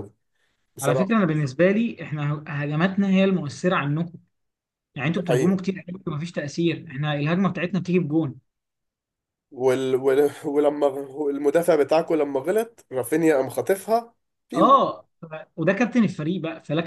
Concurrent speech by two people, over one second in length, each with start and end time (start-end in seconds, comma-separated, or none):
none